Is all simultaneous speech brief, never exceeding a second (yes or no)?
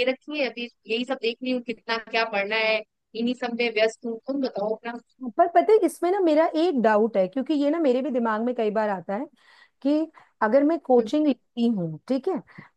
yes